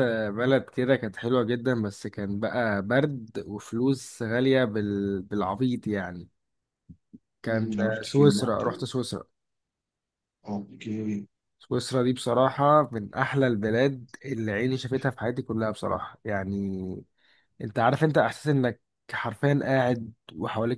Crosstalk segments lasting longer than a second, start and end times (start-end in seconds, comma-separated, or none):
7.5-8.8